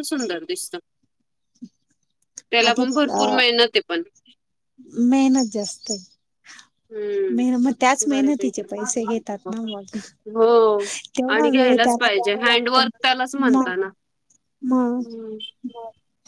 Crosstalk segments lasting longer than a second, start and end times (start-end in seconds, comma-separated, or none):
11.3-12.8